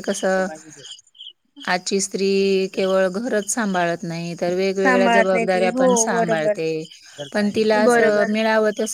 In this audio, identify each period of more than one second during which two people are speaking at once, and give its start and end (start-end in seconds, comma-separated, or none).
4.8-6.5